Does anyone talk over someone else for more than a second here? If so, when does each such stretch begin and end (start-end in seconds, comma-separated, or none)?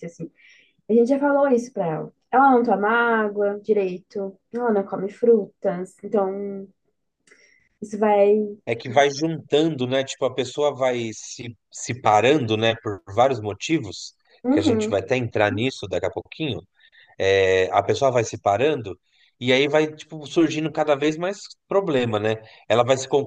none